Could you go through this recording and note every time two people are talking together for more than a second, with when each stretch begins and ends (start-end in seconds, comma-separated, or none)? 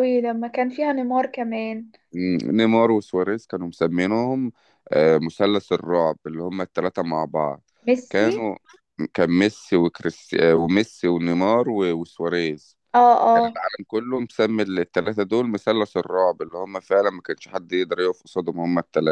none